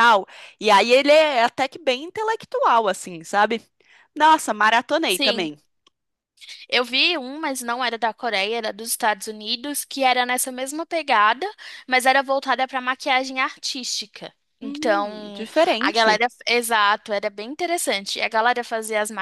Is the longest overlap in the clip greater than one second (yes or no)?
yes